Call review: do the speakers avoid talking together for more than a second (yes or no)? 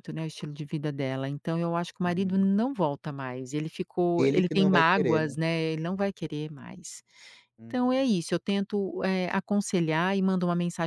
no